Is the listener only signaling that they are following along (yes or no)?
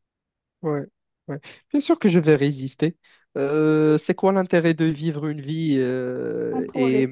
yes